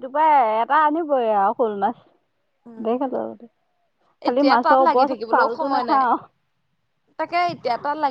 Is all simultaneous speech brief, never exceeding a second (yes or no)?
no